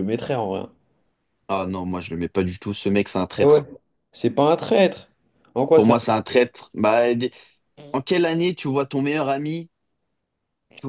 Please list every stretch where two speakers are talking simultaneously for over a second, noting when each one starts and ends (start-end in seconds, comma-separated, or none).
none